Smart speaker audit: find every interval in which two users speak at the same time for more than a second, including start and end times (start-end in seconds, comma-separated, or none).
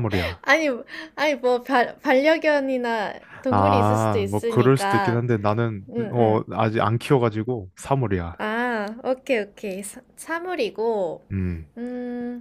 3.5-5.2